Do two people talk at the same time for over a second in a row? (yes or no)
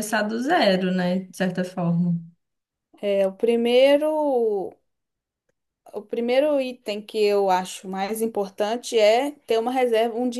no